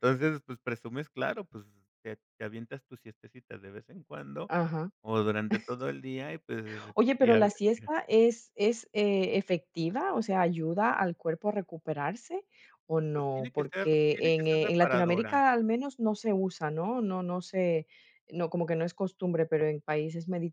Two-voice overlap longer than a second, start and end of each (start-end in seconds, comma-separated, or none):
13.1-15.4